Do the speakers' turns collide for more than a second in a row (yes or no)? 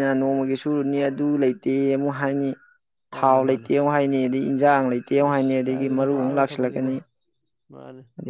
yes